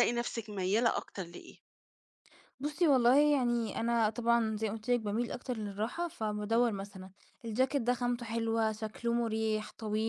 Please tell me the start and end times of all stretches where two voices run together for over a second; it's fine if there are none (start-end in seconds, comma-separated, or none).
none